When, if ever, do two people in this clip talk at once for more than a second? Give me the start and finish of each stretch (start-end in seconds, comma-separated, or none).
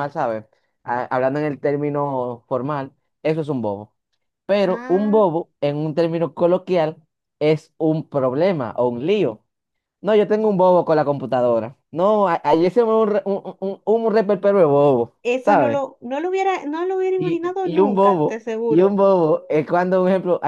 17.1-19.0